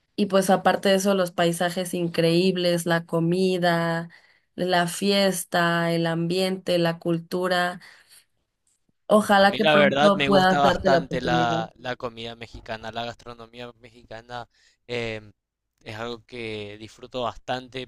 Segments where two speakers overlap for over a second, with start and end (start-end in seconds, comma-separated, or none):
9.4-11.6